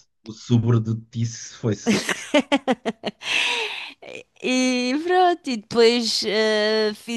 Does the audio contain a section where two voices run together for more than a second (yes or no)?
no